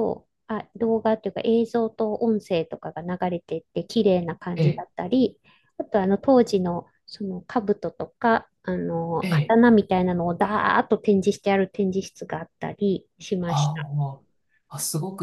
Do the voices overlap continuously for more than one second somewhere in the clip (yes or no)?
no